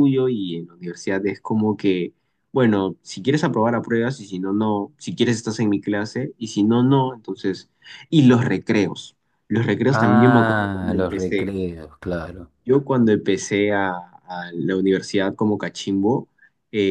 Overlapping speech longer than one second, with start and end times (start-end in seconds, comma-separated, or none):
9.9-11.5